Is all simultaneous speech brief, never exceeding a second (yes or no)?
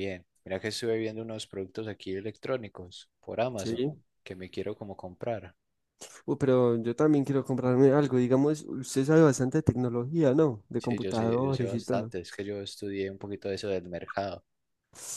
no